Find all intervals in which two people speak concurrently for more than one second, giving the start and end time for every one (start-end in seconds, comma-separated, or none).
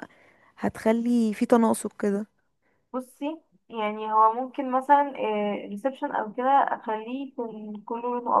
none